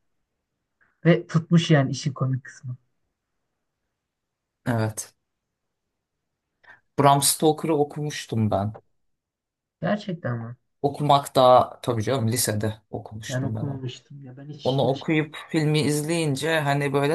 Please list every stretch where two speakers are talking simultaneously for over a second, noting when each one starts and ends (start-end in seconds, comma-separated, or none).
none